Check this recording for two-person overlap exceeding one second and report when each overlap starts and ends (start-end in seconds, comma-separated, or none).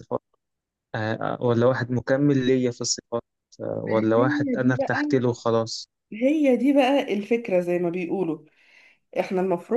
3.9-5.2